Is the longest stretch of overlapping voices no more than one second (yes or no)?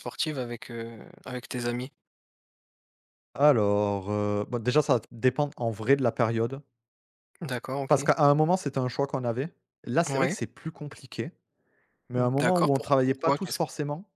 no